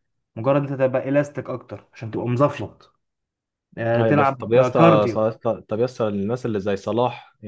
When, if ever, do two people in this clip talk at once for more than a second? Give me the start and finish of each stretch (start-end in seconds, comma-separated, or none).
4.0-5.2